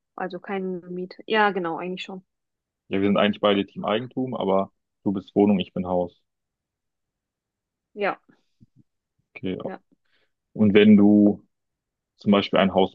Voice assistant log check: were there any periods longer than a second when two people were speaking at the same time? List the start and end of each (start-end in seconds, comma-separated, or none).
none